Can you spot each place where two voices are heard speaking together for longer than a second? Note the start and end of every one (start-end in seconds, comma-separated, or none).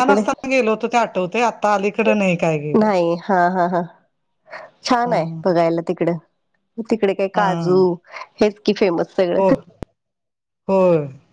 none